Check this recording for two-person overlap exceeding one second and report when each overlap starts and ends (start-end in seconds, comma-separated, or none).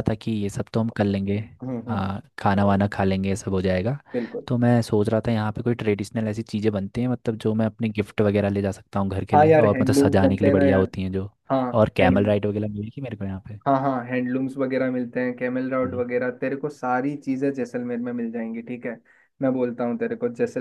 9.3-10.9